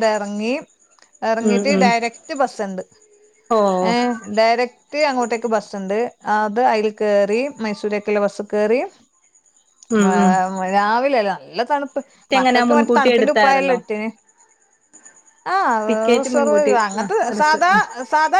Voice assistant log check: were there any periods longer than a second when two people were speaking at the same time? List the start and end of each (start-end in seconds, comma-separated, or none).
12.4-13.8, 15.9-17.7